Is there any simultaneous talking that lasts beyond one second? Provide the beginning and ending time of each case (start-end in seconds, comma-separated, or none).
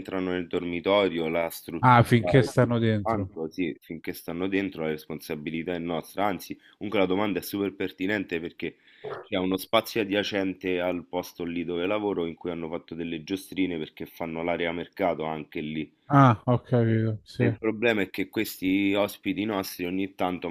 1.8-3.3